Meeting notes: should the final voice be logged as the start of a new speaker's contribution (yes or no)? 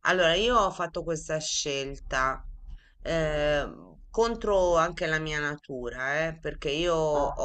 no